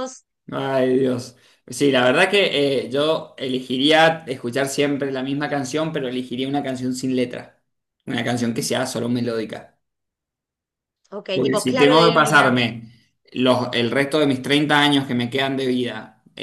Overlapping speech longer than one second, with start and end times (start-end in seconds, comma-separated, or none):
11.3-12.6